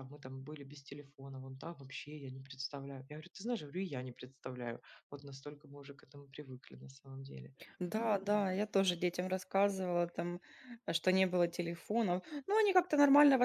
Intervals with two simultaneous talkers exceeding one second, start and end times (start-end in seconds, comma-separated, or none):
none